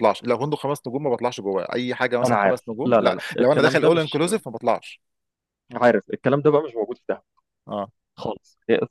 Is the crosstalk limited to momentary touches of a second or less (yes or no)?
no